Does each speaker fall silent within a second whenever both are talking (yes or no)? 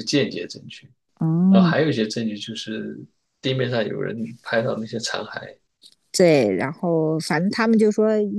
yes